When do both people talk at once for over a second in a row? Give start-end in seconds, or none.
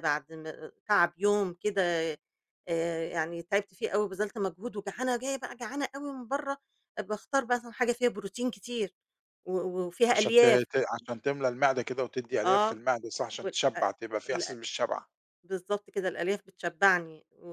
none